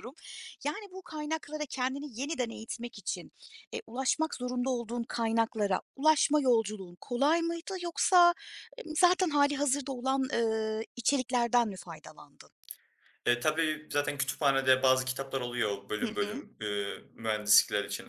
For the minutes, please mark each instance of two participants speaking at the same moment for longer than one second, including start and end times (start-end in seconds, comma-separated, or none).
none